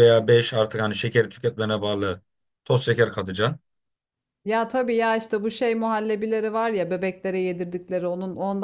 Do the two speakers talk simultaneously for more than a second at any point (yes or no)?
no